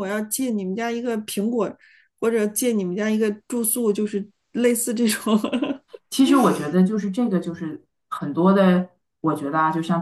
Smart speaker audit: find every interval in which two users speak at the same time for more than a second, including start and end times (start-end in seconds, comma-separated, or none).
none